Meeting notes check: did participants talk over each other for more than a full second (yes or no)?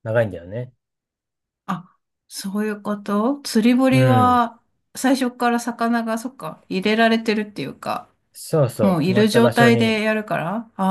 yes